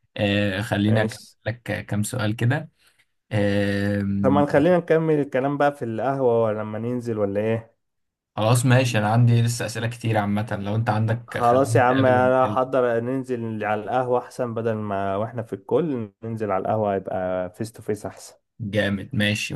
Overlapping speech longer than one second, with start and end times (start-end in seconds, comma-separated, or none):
11.3-12.6